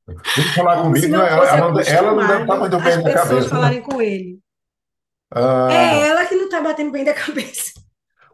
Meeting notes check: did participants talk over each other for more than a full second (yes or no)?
yes